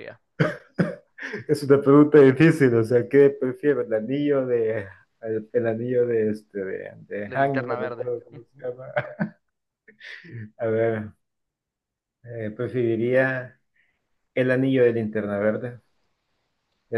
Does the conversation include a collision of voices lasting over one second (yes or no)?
yes